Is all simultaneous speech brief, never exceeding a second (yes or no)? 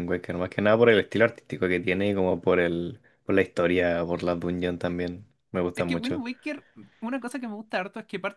yes